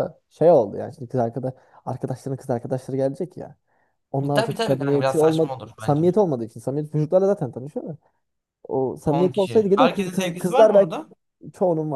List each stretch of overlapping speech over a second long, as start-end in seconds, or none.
4.3-6.0, 9.1-10.9